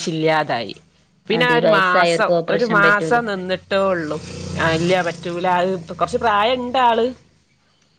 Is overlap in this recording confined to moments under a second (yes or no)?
no